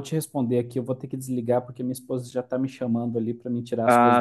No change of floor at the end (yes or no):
yes